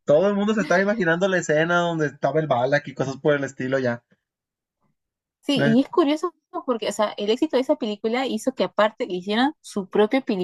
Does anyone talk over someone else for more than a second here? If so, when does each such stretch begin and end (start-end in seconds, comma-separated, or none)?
none